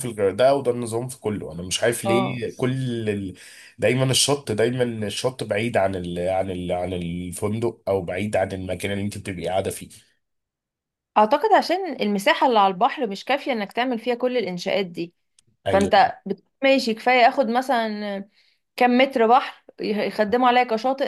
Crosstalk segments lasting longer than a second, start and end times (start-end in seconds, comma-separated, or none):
none